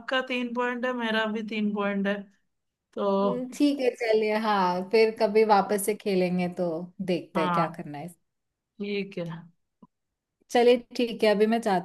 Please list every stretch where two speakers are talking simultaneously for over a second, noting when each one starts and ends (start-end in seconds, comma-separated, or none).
none